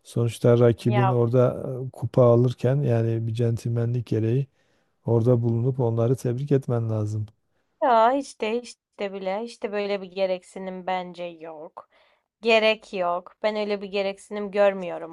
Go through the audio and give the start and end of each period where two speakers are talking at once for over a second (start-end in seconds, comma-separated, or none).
none